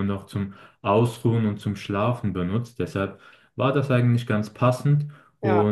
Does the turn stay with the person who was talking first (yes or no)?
yes